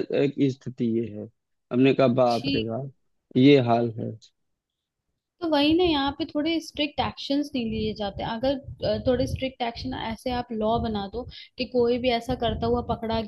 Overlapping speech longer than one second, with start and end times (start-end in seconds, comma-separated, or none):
none